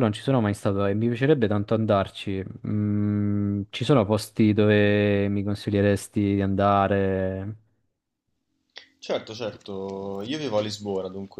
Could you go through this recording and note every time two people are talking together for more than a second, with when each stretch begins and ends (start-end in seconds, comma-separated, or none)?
none